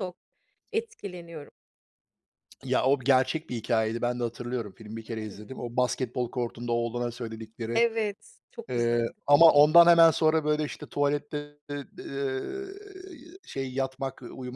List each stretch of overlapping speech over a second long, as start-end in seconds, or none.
none